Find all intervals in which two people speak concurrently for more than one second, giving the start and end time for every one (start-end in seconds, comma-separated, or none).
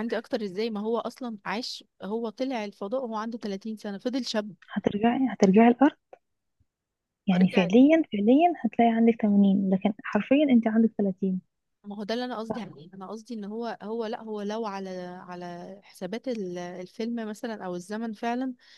none